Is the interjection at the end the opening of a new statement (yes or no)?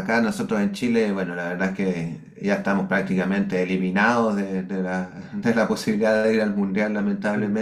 no